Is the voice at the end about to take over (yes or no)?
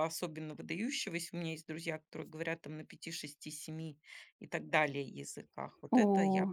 yes